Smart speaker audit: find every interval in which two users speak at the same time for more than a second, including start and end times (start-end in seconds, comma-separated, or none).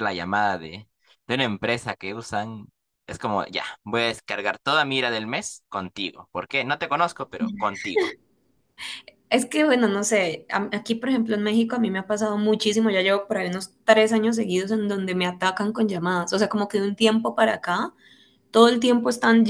none